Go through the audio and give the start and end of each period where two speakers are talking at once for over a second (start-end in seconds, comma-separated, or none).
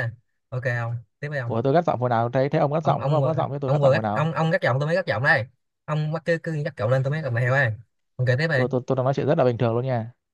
2.8-4.3